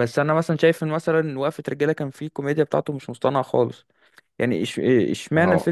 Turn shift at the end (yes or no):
no